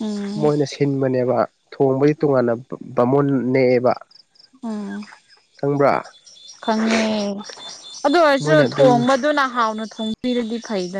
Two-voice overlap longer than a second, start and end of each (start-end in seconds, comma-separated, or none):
none